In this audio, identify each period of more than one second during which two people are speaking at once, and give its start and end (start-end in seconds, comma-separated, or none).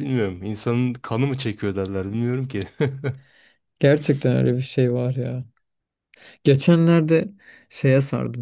none